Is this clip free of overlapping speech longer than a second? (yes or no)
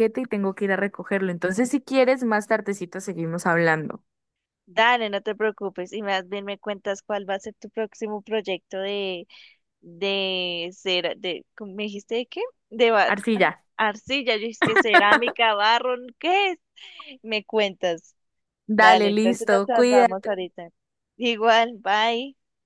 no